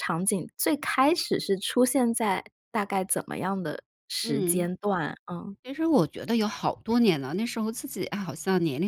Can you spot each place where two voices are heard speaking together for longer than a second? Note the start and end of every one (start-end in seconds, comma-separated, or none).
none